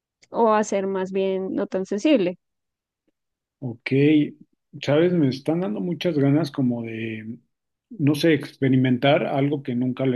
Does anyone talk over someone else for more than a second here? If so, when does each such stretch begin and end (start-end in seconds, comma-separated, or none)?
none